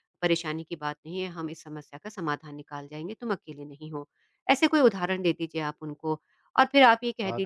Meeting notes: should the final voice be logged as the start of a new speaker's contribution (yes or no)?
no